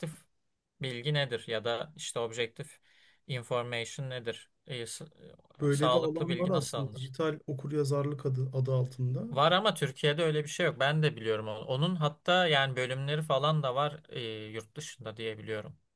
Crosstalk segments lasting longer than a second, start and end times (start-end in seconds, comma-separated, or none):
5.7-7.1